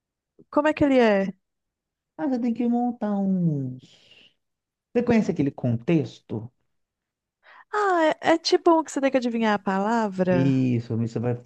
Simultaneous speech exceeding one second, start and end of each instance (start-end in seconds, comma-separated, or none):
none